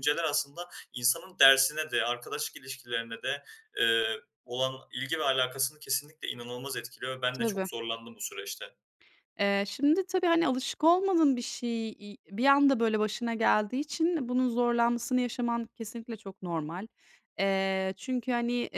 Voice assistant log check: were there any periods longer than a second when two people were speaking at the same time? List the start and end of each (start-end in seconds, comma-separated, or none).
none